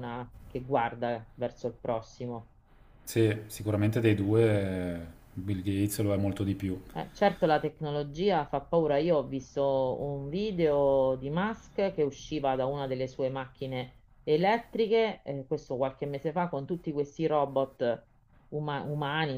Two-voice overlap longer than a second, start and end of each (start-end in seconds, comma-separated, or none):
none